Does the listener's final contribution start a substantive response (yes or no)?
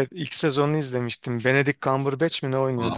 yes